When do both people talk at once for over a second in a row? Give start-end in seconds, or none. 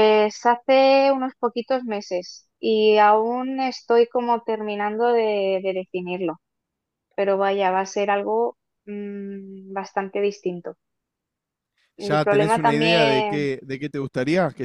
12.0-13.5